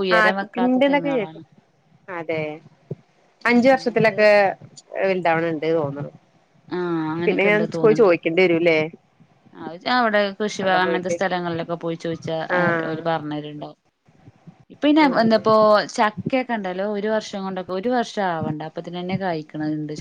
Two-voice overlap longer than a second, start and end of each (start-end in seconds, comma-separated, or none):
none